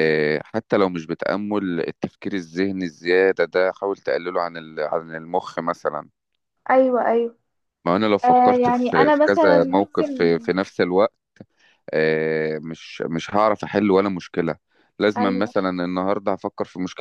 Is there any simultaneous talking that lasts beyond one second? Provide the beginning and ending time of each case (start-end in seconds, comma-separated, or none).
8.2-10.3